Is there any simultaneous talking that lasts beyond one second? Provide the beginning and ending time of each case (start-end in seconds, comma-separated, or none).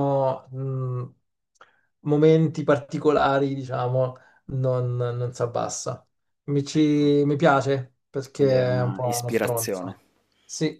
8.3-10.0